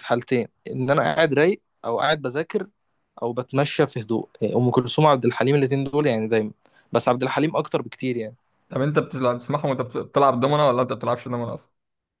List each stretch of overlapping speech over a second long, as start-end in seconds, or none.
none